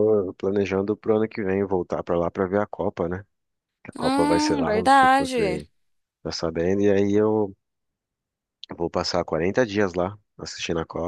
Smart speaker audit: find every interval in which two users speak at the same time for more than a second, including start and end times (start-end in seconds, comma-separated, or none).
4.0-5.6